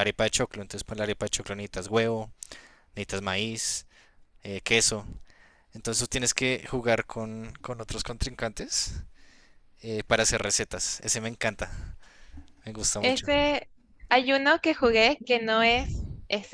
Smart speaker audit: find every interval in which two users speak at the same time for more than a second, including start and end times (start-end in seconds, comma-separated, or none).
none